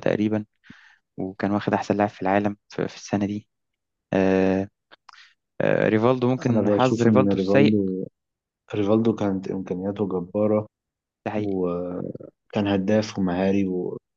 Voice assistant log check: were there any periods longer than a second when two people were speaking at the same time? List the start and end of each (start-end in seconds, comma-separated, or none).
6.5-7.8